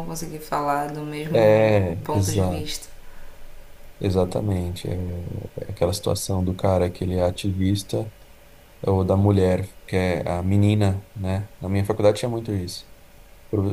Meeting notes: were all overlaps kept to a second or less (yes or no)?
no